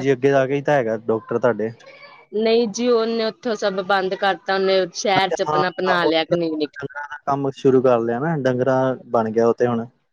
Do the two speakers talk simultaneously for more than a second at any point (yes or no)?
yes